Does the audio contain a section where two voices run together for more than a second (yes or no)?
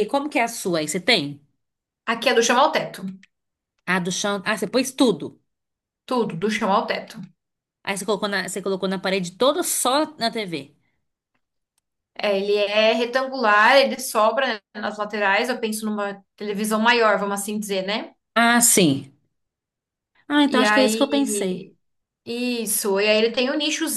yes